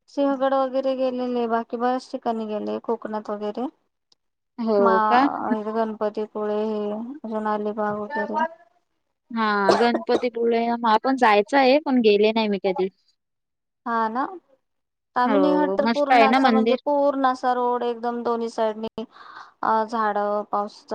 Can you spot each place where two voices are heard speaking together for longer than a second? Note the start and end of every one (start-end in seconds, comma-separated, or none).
15.3-16.8